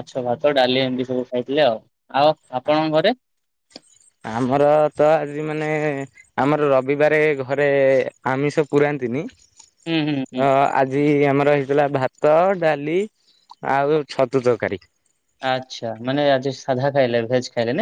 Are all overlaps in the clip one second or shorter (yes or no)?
yes